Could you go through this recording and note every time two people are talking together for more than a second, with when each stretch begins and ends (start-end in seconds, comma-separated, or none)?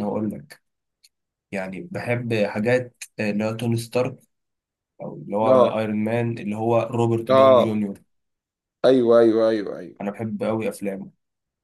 none